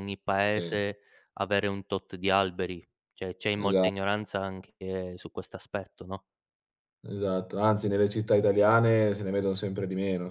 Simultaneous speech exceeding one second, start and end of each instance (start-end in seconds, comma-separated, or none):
none